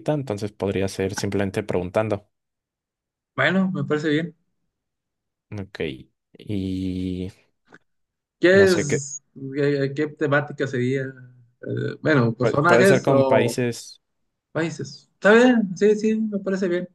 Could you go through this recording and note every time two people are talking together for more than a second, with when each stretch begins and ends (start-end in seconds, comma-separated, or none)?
12.4-13.6